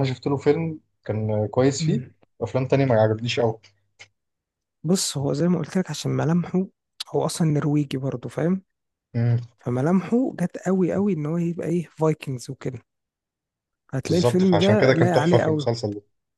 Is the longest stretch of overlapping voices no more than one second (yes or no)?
no